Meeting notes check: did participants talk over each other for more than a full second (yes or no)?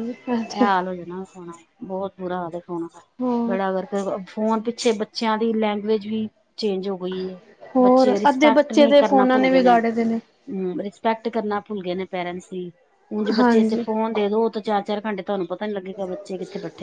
yes